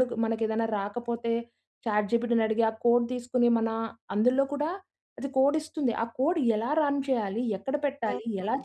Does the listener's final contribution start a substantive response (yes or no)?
no